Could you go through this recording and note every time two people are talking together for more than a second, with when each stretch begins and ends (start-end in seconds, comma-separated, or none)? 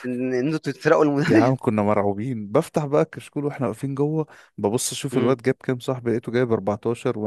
none